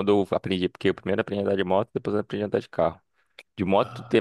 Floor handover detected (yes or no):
no